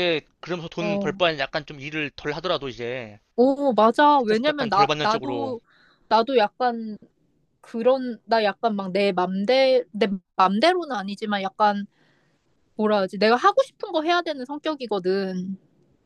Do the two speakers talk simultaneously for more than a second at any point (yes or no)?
yes